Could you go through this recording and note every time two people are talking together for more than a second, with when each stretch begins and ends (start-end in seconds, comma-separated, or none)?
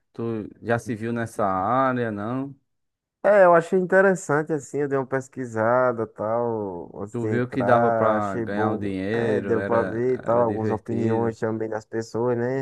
7.1-11.4